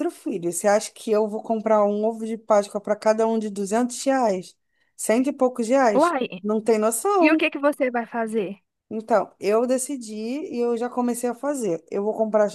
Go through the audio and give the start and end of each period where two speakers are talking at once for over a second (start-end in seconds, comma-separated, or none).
none